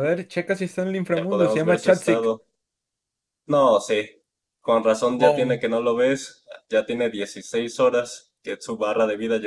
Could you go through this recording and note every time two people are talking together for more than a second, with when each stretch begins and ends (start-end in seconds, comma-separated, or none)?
1.1-2.4